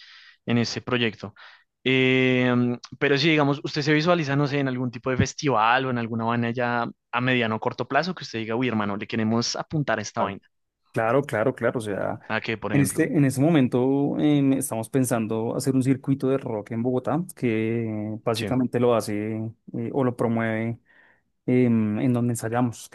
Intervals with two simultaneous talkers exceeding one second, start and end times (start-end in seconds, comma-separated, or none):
none